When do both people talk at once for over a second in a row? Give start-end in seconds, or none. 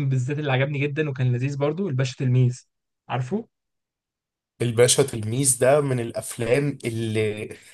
none